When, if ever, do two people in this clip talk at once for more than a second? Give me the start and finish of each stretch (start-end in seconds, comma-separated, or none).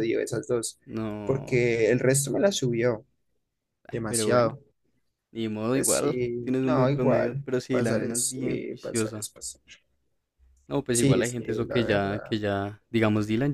5.7-9.3, 10.9-12.3